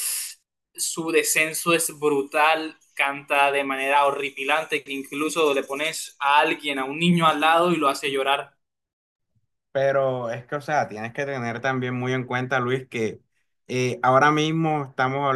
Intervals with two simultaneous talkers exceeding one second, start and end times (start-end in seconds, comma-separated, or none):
none